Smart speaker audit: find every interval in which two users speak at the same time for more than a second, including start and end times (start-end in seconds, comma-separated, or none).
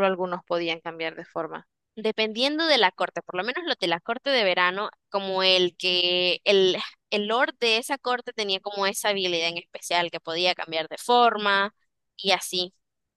none